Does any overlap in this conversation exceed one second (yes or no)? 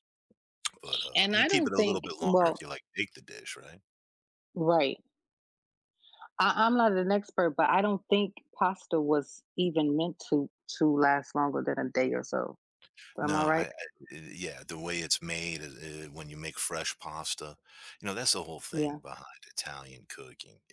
yes